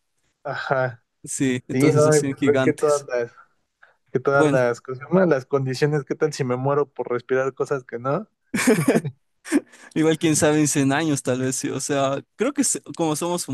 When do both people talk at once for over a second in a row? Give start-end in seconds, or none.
1.7-3.1